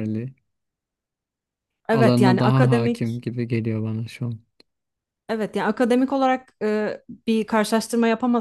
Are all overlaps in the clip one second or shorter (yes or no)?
no